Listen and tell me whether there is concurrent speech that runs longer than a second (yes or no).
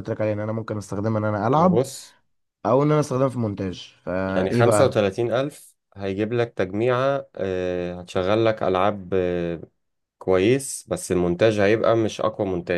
no